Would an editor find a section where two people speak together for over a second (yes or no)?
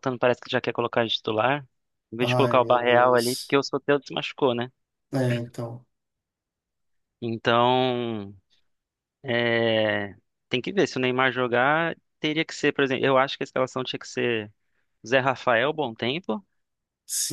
yes